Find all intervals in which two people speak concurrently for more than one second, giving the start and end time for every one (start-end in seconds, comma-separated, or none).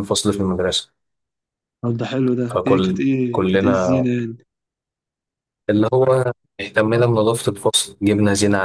2.5-4.1